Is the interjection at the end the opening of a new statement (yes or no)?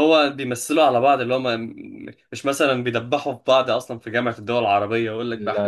yes